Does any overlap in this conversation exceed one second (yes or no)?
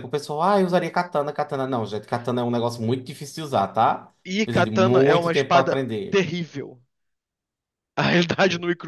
yes